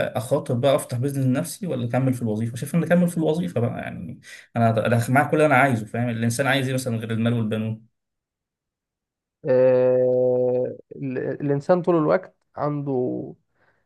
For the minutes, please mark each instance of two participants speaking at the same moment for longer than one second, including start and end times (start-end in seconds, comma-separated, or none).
none